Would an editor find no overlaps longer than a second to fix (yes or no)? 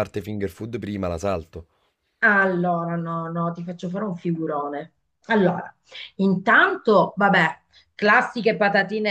yes